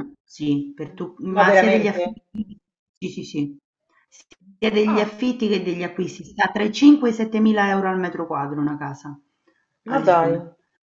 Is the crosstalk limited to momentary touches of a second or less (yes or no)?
no